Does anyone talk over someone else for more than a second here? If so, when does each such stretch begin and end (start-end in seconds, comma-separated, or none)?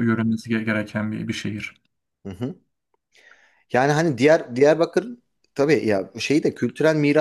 none